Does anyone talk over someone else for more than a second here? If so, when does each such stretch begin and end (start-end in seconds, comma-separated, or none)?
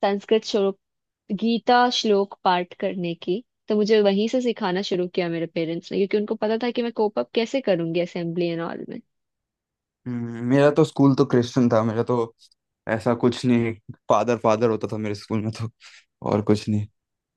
none